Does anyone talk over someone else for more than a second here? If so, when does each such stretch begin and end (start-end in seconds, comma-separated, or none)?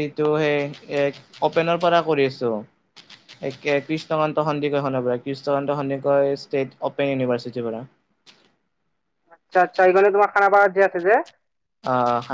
none